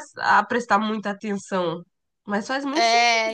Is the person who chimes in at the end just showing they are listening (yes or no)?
no